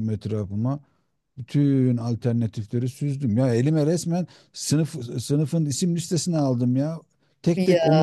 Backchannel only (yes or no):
yes